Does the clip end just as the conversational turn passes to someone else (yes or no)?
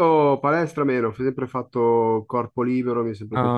no